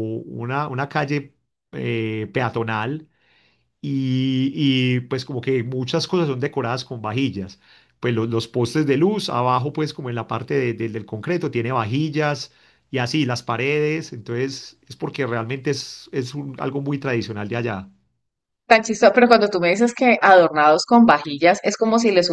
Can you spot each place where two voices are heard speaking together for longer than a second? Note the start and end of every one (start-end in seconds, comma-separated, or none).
none